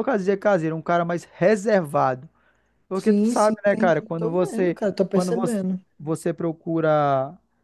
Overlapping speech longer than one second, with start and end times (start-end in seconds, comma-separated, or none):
2.9-5.6